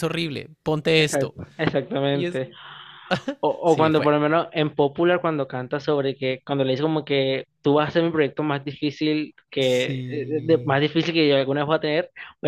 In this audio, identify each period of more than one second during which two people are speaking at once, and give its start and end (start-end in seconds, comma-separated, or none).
9.6-10.8